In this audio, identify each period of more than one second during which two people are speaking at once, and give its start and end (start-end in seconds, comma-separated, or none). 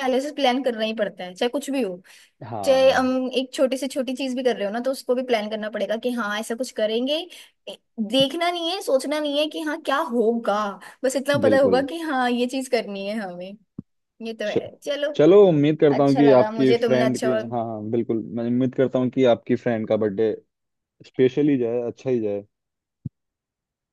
15.9-17.4